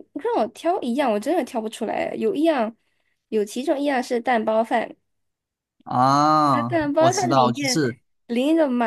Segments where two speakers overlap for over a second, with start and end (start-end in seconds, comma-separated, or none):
6.5-7.8